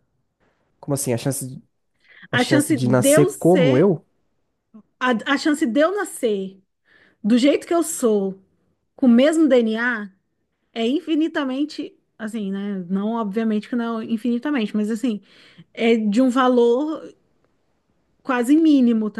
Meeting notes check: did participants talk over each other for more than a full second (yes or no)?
yes